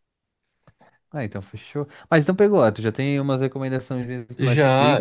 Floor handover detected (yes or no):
yes